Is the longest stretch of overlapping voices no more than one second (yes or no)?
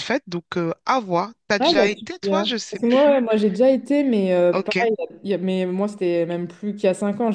no